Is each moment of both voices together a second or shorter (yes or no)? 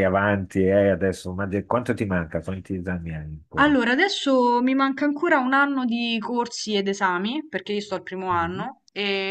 yes